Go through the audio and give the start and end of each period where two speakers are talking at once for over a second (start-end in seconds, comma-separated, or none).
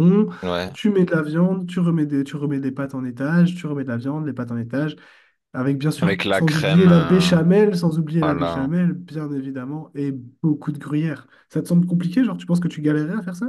6.0-7.3